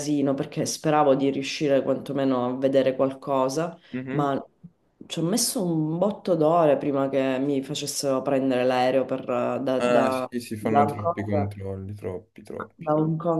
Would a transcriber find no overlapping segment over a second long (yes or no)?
no